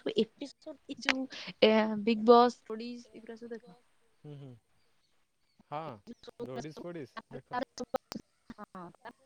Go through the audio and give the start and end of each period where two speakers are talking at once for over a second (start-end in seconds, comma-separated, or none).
none